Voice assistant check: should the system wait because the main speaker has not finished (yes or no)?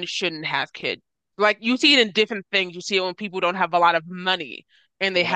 yes